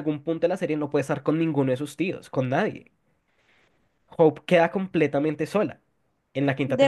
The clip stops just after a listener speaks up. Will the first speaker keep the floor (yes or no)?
no